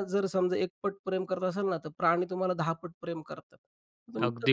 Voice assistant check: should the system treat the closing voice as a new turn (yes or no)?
yes